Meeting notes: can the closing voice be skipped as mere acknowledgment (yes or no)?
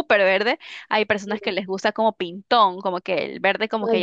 yes